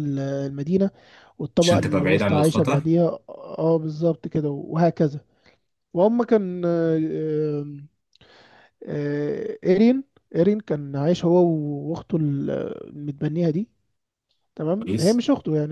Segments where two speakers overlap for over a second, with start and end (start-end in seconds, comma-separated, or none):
1.6-2.9